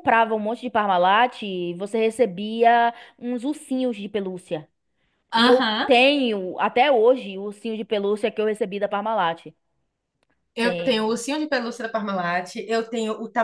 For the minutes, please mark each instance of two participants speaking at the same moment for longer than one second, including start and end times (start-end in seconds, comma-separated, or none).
none